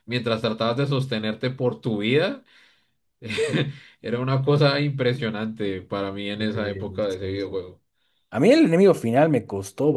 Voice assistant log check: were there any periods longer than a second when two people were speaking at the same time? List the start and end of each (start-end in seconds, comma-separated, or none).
6.4-7.6